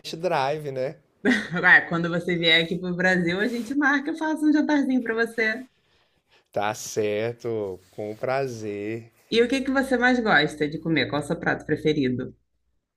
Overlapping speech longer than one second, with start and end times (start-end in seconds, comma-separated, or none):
none